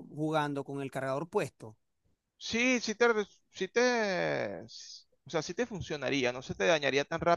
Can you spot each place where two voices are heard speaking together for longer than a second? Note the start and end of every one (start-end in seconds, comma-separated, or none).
none